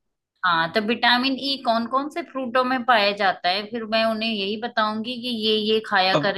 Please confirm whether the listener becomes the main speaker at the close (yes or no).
yes